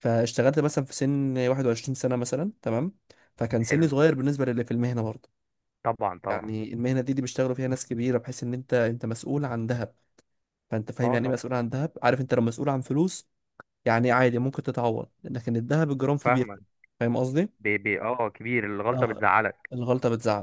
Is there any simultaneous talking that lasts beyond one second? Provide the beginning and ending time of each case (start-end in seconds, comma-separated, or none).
none